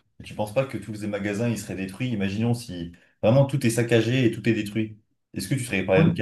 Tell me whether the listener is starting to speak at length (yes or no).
no